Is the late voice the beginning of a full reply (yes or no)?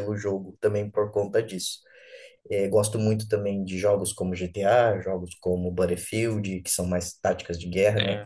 no